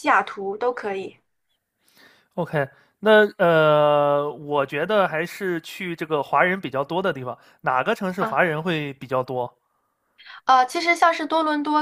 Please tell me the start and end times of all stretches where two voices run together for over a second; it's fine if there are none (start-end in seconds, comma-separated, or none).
none